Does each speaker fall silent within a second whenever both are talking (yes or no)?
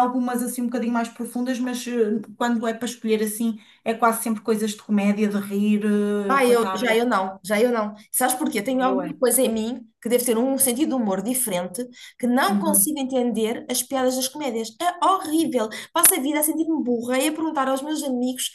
yes